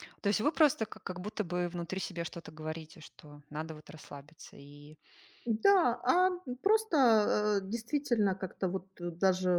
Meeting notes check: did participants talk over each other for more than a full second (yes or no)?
no